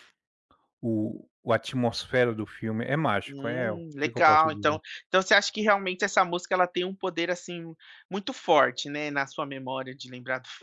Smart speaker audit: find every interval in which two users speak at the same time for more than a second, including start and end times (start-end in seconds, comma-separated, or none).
3.3-4.8